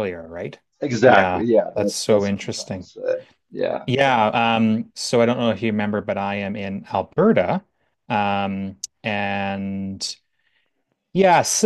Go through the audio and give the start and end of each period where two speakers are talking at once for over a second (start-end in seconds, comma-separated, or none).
1.0-2.9